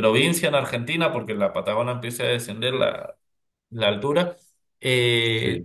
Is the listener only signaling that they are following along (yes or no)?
yes